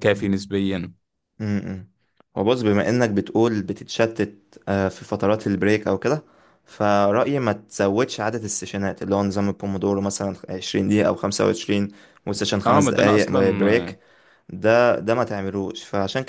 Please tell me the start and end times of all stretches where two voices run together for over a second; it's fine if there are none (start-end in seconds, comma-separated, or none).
12.7-14.0